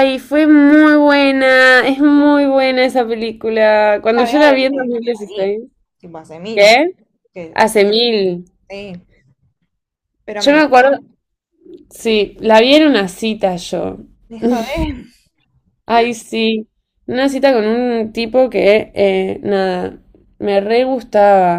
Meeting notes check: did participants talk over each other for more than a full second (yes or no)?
yes